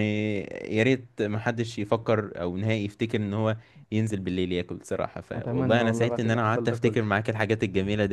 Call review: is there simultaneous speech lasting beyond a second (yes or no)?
yes